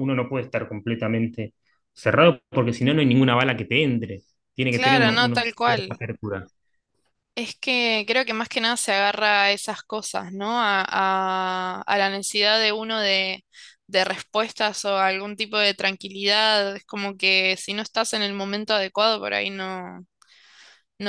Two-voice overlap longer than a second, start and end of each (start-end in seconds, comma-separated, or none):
4.7-6.0